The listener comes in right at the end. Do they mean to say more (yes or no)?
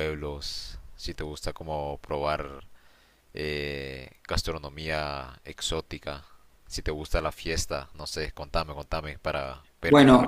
yes